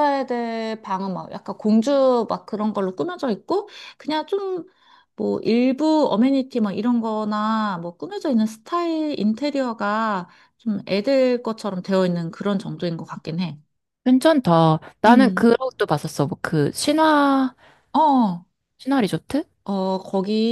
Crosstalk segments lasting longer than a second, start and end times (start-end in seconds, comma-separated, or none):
none